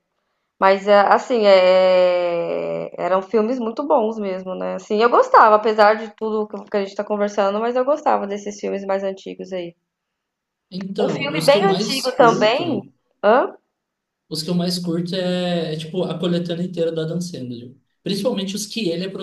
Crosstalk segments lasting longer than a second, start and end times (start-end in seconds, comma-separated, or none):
11.0-12.9